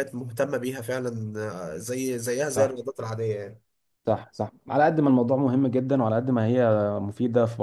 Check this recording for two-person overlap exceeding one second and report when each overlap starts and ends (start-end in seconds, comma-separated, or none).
none